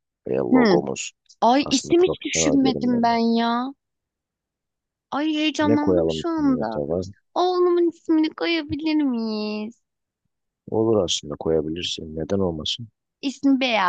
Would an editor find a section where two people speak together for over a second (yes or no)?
yes